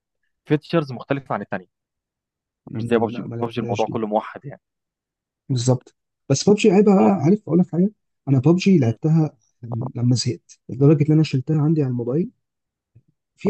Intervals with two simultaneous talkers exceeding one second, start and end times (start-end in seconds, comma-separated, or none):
2.7-4.0